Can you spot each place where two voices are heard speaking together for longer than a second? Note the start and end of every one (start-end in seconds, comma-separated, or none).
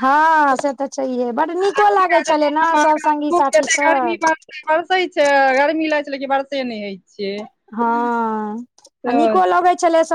none